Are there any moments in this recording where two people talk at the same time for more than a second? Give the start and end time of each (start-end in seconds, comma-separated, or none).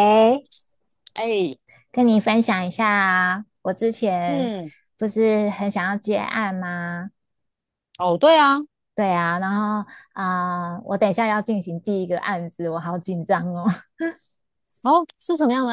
none